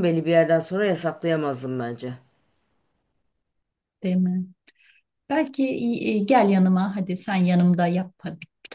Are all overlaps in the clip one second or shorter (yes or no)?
yes